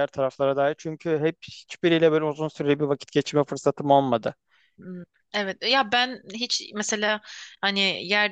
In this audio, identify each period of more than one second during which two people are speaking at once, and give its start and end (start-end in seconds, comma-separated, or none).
none